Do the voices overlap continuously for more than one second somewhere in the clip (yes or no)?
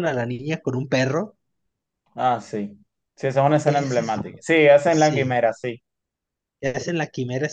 no